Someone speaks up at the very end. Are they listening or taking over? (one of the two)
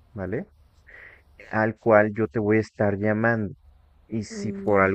listening